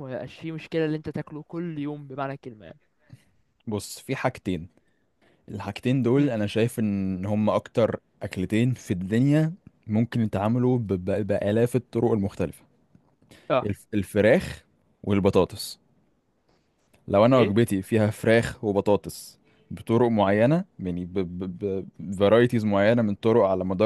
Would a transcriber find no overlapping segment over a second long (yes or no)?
yes